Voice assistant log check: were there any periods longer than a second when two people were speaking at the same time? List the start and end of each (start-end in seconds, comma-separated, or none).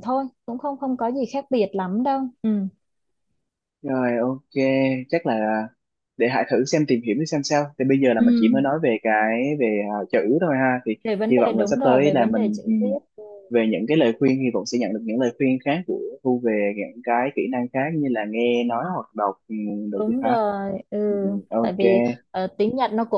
11.0-12.7